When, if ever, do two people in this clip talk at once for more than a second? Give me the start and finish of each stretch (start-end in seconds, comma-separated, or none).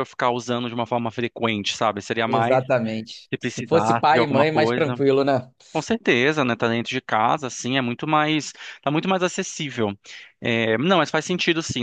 3.3-5.0